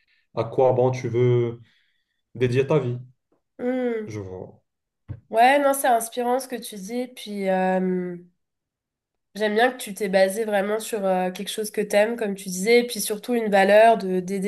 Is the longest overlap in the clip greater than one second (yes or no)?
no